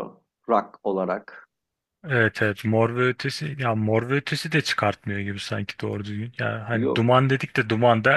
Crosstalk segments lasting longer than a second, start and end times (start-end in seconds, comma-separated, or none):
none